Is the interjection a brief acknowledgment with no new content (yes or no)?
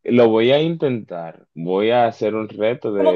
no